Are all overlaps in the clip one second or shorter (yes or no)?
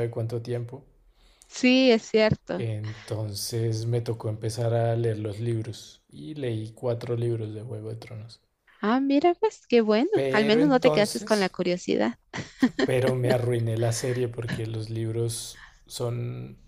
no